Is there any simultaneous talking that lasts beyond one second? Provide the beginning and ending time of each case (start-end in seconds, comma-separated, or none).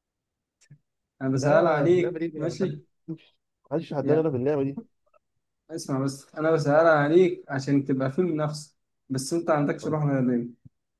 1.4-2.8